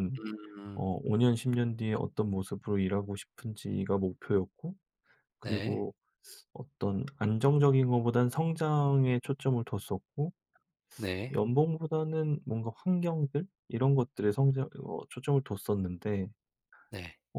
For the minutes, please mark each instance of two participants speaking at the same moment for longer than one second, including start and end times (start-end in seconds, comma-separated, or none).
none